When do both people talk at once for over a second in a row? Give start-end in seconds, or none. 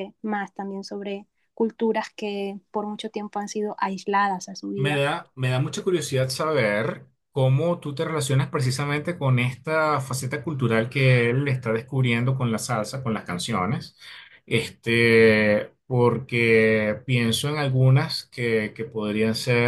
none